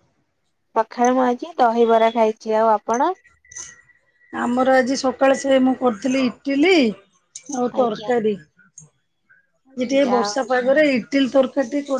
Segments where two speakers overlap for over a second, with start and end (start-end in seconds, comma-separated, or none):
none